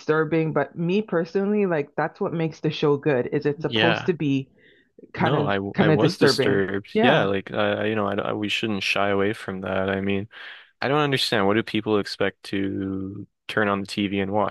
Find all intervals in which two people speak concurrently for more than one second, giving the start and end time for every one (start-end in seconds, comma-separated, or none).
5.2-7.3